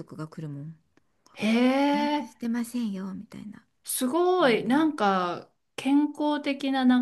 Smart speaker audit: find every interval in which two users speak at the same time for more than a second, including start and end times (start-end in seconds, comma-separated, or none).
none